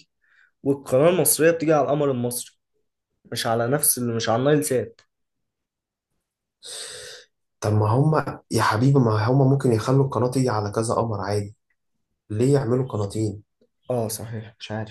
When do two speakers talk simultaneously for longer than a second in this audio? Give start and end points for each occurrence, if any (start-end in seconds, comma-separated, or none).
none